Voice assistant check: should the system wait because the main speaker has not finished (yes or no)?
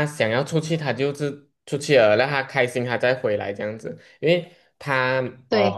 yes